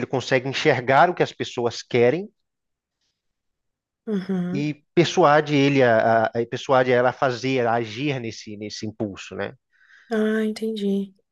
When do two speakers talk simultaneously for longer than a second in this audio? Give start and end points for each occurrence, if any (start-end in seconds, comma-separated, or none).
none